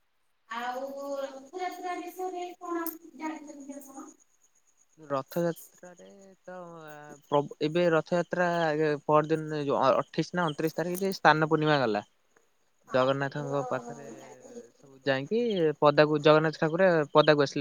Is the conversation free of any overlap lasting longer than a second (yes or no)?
yes